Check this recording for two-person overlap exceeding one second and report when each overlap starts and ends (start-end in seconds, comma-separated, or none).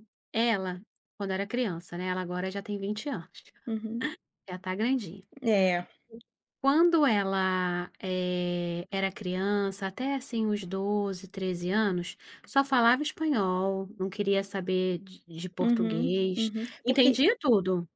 15.6-17.2